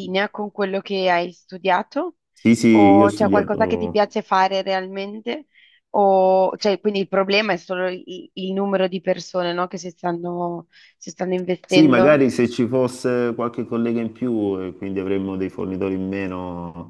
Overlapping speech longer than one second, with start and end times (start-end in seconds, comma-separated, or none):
2.7-3.9